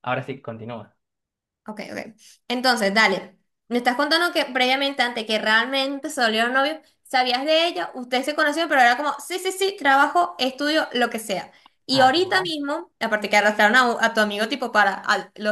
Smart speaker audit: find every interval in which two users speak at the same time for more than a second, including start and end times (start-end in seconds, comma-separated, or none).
none